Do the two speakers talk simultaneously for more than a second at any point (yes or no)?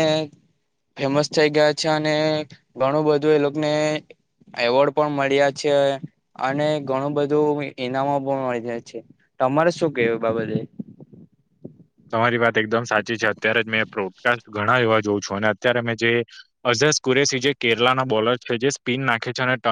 no